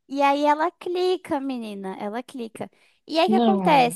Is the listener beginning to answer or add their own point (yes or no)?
no